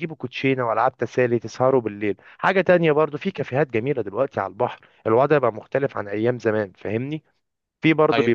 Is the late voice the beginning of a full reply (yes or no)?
no